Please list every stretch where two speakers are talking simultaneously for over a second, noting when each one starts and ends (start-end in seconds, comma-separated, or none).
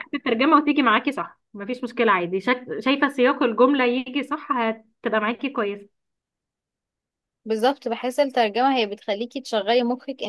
none